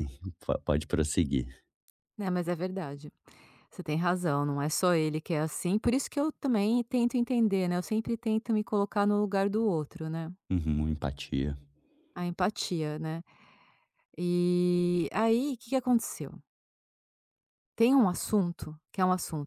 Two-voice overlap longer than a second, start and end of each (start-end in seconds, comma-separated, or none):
none